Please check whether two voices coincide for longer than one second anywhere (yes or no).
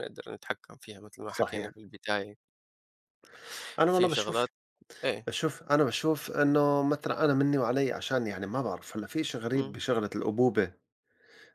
no